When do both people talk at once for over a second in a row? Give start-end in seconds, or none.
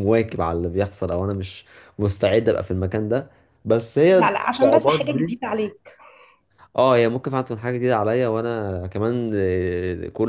4.1-5.4